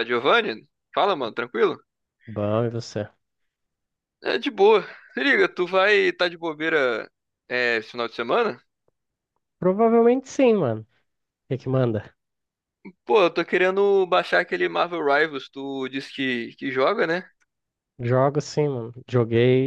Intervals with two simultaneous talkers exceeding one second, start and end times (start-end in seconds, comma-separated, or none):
none